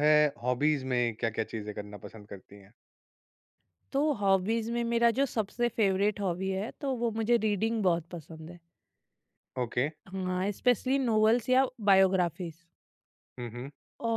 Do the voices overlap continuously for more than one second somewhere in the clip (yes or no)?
no